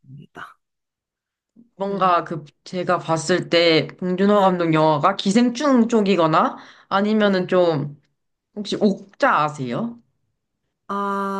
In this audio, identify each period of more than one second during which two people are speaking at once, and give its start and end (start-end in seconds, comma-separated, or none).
none